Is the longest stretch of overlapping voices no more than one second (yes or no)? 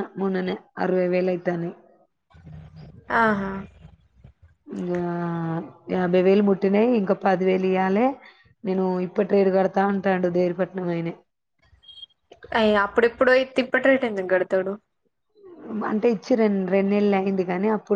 yes